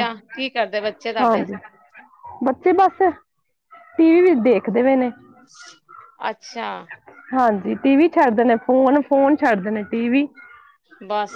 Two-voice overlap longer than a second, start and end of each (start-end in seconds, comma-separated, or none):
none